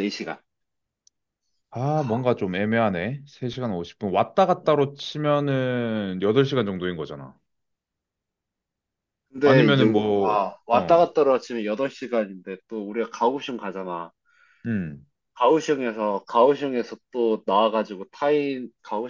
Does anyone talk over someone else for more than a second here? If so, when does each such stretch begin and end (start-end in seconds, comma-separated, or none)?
9.4-11.1